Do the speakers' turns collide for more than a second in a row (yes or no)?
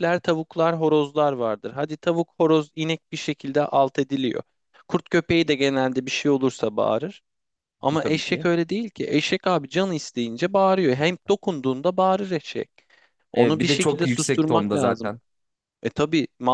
yes